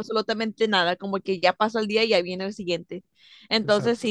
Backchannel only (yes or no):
yes